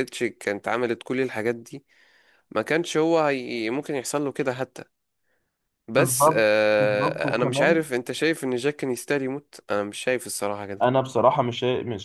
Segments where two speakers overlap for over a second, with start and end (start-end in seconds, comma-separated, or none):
5.9-7.8